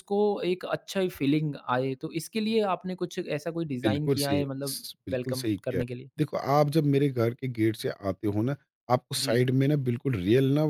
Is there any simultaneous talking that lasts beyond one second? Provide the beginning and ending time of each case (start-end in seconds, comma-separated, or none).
3.8-6.1